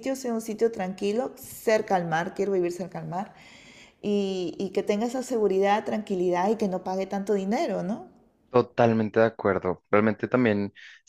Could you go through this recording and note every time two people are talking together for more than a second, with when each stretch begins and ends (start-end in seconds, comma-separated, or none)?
none